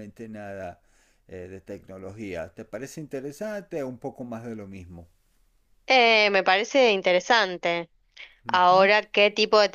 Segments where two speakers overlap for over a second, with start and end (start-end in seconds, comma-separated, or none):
none